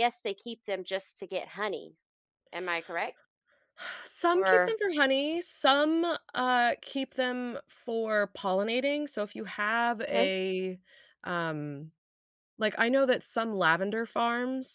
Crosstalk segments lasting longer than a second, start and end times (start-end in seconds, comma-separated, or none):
none